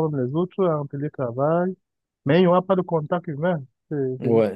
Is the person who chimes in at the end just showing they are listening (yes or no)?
no